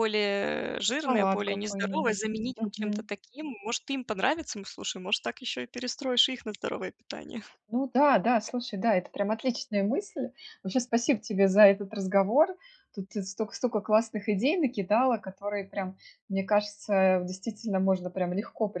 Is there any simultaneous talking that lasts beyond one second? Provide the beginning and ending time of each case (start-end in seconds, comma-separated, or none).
1.0-3.1